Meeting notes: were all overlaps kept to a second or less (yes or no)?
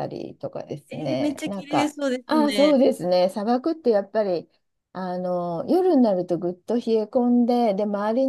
no